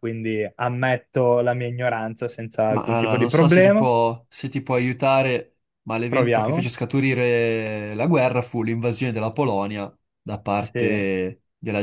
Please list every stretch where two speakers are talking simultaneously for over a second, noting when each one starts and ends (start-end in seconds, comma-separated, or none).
2.7-3.9